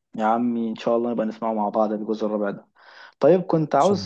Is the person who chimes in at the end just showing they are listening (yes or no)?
yes